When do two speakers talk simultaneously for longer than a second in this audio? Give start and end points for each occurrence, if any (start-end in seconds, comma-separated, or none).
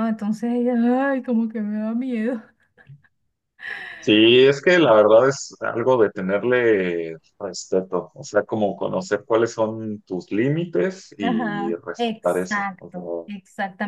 11.2-13.4